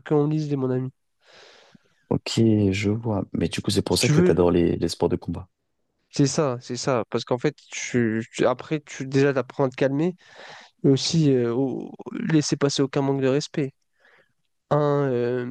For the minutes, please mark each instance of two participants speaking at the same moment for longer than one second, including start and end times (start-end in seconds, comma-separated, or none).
none